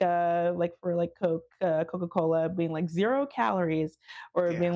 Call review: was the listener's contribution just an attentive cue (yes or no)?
yes